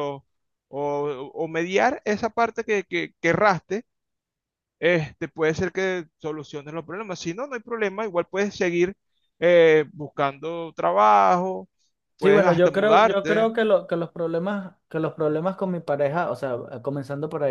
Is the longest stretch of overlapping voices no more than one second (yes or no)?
no